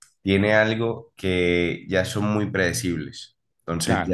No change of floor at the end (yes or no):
yes